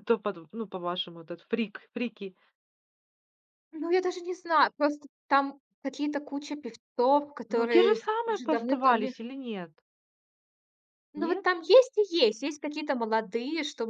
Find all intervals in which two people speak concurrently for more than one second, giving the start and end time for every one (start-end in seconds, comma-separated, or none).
7.5-9.1